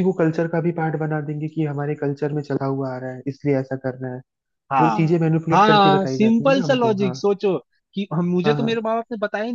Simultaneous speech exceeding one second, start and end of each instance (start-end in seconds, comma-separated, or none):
4.8-7.2